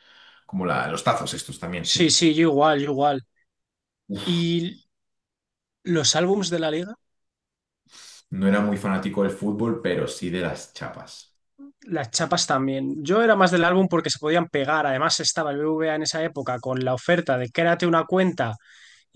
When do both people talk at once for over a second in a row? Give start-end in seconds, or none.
none